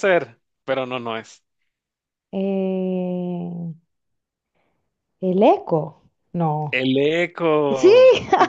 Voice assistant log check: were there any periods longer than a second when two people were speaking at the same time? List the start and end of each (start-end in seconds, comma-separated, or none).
none